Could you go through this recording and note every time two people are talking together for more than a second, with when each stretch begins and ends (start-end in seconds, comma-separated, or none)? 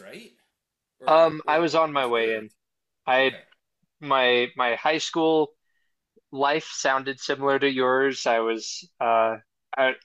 1.1-2.5